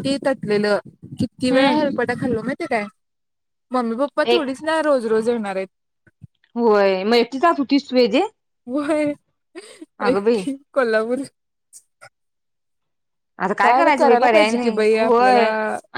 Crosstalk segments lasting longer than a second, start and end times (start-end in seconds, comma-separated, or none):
13.6-15.4